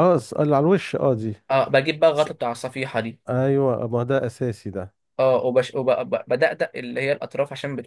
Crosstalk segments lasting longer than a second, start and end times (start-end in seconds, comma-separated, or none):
none